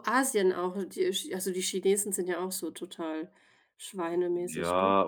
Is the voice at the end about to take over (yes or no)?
yes